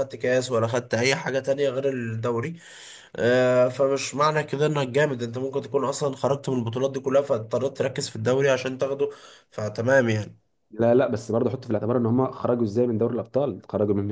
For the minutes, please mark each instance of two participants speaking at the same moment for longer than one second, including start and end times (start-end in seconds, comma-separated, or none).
none